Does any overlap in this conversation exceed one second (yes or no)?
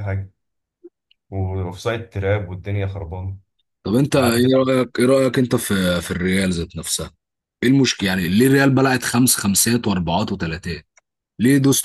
no